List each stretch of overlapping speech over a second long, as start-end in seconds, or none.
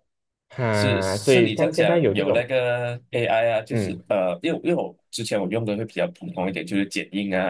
0.7-2.4